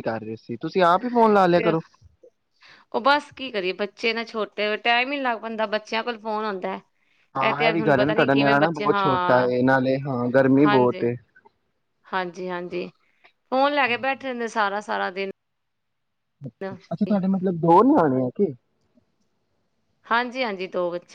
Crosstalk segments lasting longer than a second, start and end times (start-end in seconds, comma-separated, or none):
7.5-9.5